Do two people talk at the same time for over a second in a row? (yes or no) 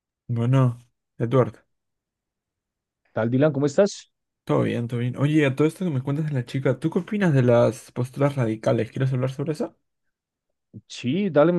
no